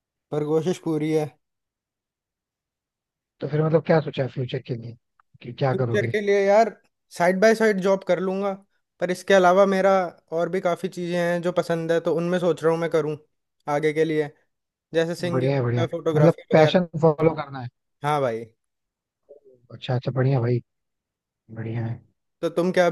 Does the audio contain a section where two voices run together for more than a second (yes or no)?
yes